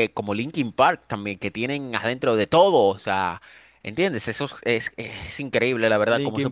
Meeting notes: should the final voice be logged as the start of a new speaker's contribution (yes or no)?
yes